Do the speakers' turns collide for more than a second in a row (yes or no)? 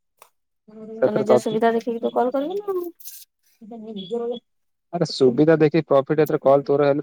yes